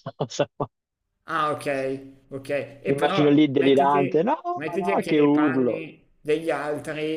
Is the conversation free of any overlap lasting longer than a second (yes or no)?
no